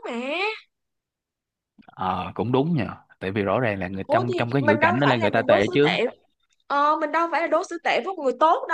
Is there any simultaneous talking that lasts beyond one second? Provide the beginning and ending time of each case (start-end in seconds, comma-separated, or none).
4.1-6.0